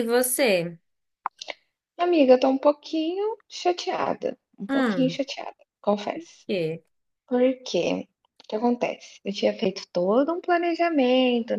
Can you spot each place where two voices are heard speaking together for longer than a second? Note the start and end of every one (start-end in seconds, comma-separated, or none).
none